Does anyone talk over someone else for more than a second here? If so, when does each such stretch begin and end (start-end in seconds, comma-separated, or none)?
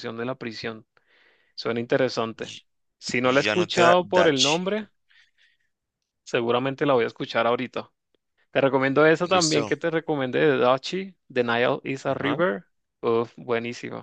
3.2-4.6